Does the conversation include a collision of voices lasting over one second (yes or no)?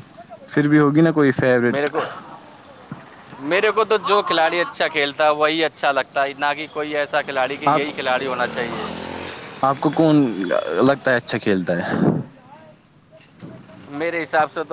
no